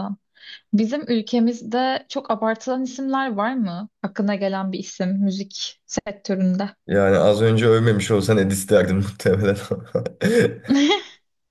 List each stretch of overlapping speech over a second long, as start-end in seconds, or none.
none